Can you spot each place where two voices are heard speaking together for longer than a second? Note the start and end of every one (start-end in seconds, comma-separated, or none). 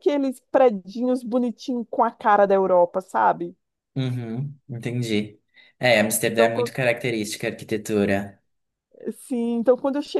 none